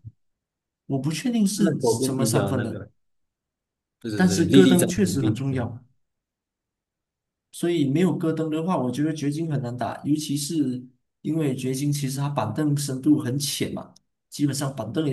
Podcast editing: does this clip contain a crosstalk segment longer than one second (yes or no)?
yes